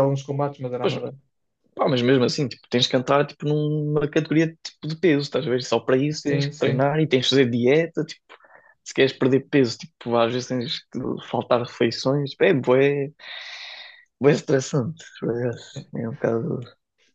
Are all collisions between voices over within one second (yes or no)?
yes